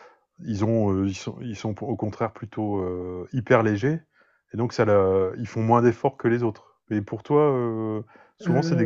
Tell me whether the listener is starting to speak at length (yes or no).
no